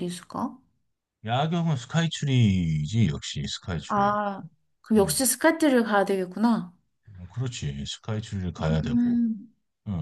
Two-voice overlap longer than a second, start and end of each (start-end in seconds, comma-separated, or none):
none